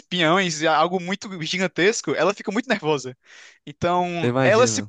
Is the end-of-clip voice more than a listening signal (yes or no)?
no